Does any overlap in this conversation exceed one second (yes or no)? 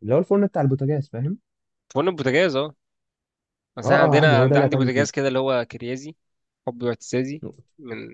yes